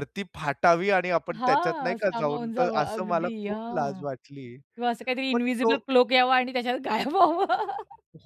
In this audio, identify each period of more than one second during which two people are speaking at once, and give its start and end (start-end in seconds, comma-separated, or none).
1.3-4.0